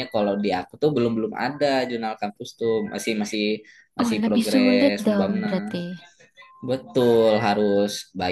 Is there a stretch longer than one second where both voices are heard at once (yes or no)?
yes